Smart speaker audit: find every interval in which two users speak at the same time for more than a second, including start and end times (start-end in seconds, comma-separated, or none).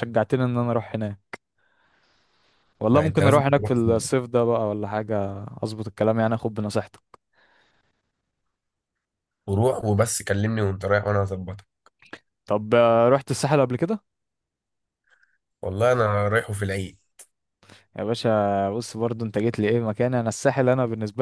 2.9-4.2